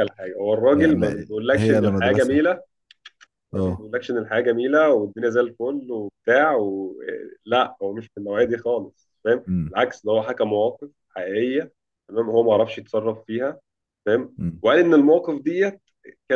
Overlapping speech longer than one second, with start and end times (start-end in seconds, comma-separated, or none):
0.7-2.4